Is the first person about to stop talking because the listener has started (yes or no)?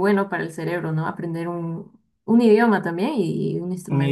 yes